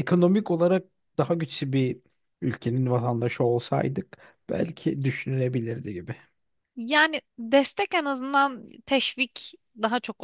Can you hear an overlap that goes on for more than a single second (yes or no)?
no